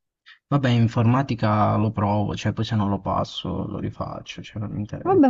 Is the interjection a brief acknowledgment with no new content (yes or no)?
no